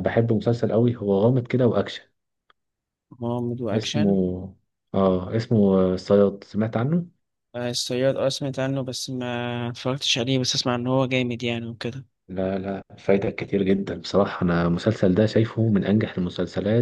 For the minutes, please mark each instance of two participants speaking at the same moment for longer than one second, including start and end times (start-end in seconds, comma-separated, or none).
none